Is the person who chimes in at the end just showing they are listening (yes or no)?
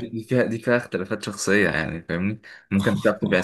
yes